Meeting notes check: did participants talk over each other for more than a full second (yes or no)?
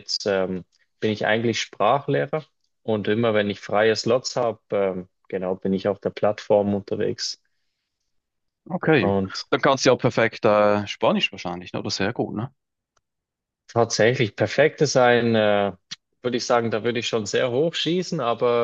no